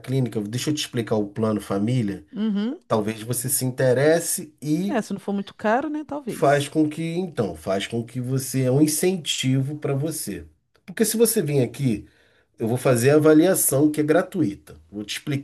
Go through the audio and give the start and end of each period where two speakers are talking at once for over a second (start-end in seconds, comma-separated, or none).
none